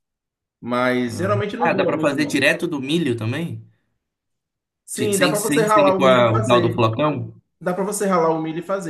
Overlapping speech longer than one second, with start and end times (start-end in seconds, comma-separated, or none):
1.1-2.5, 4.9-6.8